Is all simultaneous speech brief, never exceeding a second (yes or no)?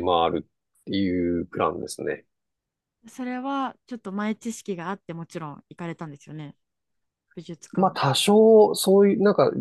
yes